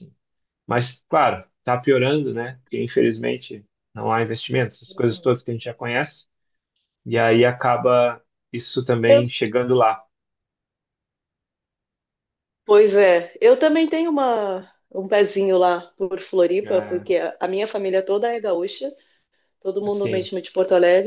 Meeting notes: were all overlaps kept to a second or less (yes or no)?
yes